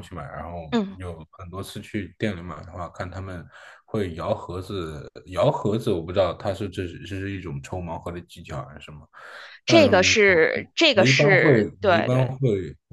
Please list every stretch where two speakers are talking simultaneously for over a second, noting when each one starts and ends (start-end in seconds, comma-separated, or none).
10.9-12.3